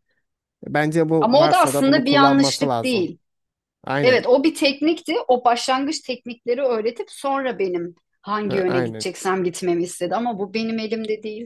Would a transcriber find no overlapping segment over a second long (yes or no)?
no